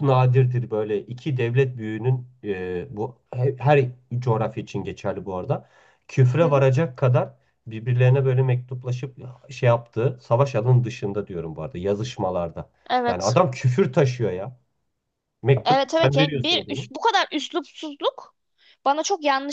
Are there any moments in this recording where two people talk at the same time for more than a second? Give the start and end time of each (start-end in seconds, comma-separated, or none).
15.7-16.9